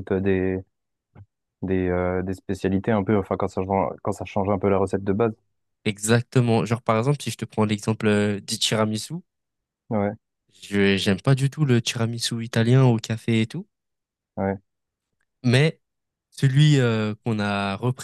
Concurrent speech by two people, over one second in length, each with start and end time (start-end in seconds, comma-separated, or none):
none